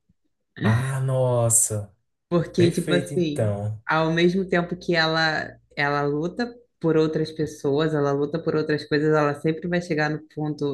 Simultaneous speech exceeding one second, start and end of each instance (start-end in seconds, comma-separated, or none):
2.5-3.8